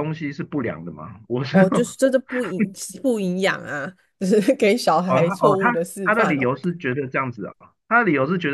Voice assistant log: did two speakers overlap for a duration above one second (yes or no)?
yes